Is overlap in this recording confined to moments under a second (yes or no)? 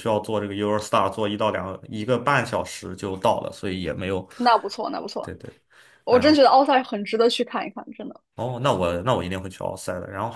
yes